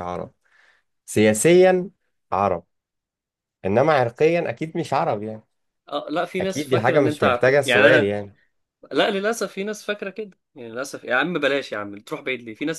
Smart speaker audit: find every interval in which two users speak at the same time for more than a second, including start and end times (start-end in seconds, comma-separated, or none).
6.4-8.2